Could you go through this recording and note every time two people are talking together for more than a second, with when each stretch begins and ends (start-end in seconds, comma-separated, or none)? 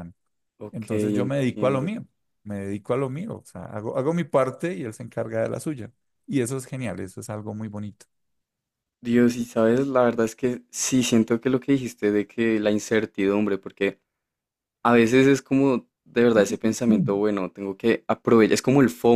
0.7-1.9